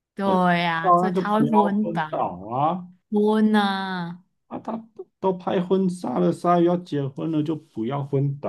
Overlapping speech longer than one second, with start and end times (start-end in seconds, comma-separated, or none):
0.8-2.4